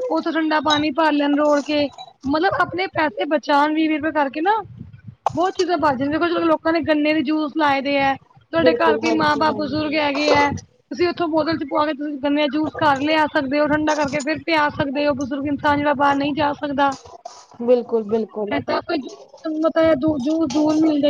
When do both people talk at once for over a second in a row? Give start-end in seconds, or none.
8.6-10.0